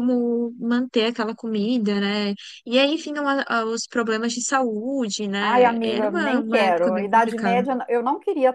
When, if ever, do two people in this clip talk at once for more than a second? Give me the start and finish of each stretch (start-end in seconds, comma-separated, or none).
5.4-7.6